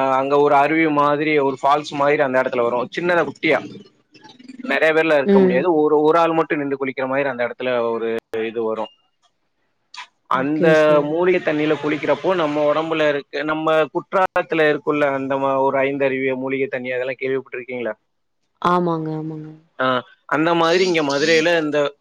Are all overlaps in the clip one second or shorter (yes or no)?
yes